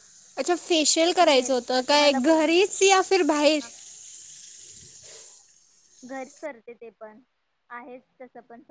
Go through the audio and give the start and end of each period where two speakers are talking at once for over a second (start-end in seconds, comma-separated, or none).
1.2-2.6